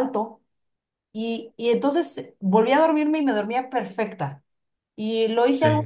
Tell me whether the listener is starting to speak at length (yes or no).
no